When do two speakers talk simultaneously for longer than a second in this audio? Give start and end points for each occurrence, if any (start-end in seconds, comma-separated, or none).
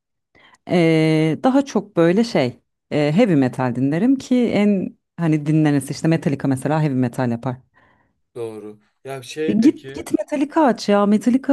none